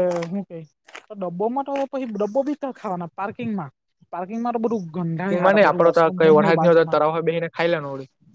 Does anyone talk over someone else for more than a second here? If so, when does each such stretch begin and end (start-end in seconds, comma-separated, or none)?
5.3-7.0